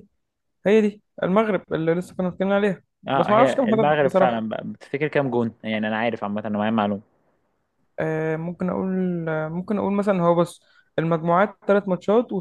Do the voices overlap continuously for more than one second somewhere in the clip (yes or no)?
yes